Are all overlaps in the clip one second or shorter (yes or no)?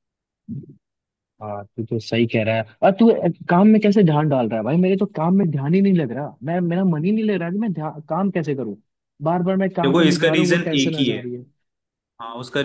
no